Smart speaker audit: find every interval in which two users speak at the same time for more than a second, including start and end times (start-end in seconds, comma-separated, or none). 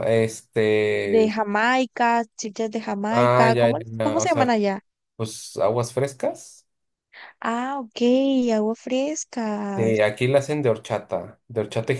3.1-4.5